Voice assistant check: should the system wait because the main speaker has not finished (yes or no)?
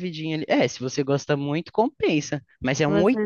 no